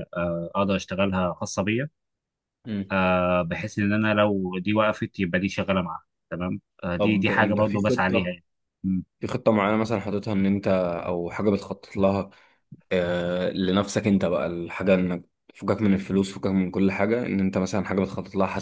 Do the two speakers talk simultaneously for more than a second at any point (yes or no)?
yes